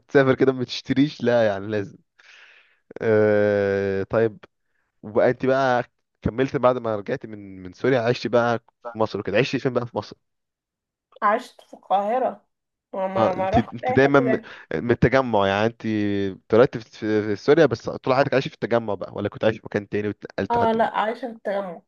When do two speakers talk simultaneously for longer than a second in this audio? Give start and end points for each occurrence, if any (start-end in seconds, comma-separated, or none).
13.2-14.4